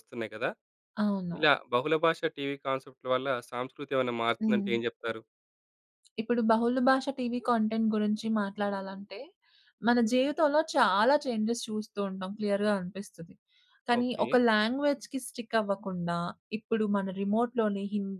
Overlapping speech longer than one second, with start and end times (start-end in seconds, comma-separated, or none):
none